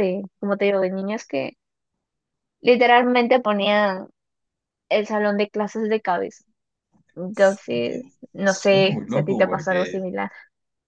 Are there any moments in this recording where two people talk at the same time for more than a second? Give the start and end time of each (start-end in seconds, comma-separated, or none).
7.3-10.1